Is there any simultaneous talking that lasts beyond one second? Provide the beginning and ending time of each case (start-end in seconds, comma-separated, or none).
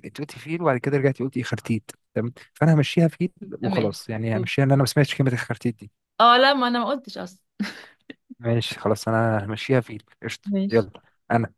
none